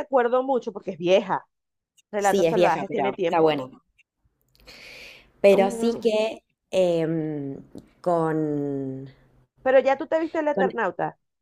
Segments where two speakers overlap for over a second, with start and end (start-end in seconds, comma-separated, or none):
2.2-3.6